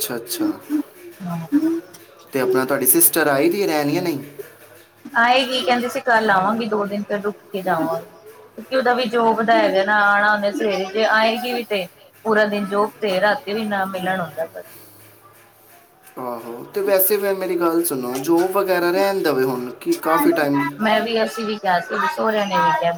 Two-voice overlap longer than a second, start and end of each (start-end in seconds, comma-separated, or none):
none